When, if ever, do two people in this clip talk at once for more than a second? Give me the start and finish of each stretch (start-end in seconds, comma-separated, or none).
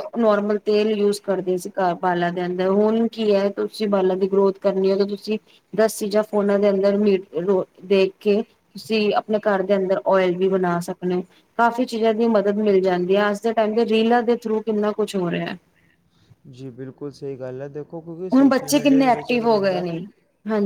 18.3-19.9